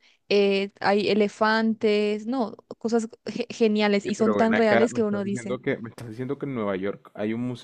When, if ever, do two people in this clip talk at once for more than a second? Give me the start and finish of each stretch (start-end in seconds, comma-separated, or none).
4.0-5.6